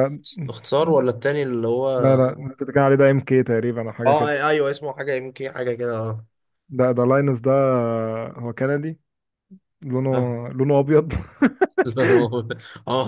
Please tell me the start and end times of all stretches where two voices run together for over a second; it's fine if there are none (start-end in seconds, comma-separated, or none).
none